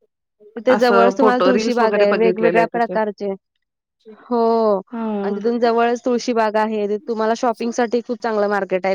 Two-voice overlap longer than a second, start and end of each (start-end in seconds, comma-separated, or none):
1.5-2.9